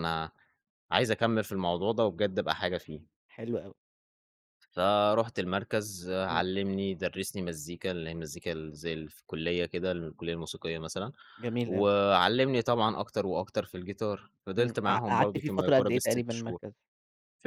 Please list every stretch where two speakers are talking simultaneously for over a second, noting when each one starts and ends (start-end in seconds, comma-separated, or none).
14.6-16.6